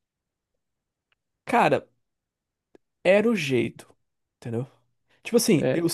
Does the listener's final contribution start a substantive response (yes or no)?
no